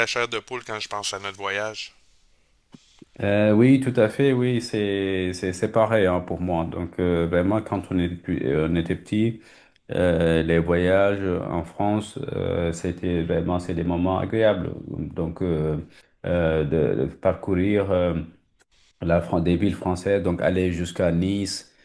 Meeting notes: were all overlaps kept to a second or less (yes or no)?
yes